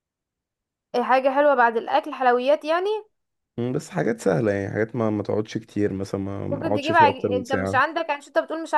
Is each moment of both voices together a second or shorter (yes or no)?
no